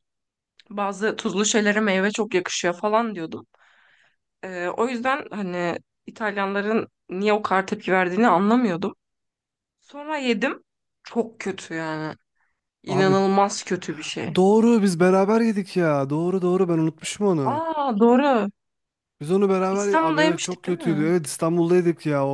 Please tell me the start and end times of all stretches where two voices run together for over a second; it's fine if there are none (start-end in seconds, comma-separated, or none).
19.7-21.1